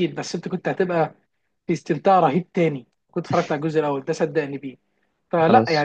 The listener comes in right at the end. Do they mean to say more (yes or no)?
no